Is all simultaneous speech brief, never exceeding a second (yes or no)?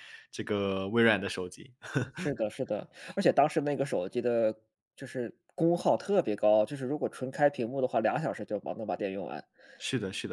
yes